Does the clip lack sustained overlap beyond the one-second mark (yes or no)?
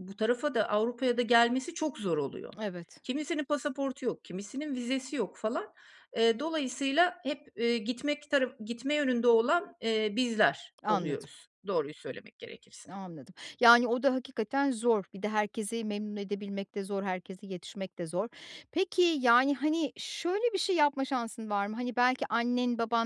yes